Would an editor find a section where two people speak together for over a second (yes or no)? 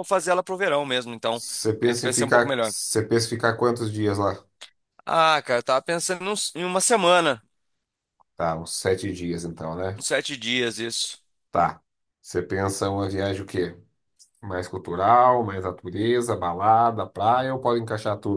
yes